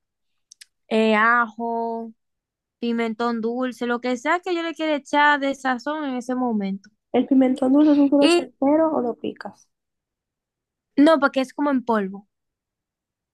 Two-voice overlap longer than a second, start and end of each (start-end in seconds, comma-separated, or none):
none